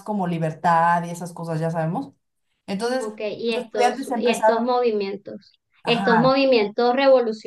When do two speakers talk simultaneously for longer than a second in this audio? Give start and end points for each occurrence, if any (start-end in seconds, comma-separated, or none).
3.0-4.7